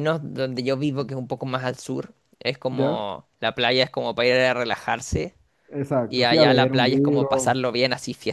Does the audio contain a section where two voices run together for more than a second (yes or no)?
yes